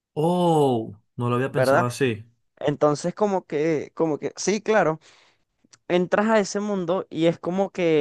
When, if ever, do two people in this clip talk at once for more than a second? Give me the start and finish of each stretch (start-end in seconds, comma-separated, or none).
none